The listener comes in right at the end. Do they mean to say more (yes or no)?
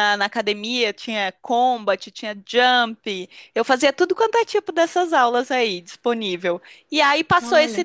no